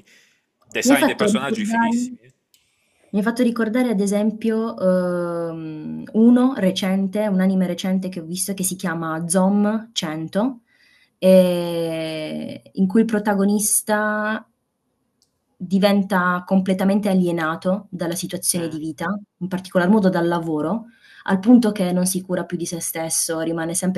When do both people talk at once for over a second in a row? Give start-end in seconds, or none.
0.8-2.2